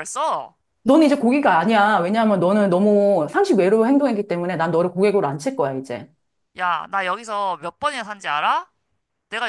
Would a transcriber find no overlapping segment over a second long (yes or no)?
yes